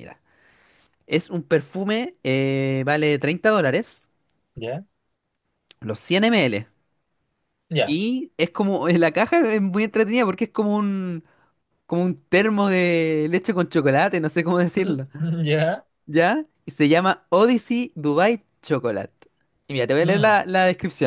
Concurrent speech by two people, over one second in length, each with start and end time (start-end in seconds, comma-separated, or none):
none